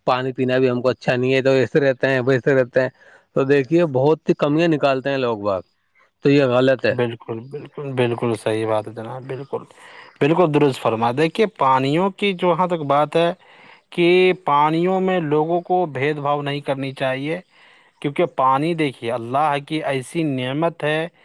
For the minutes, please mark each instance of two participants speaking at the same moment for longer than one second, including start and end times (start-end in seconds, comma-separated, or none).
none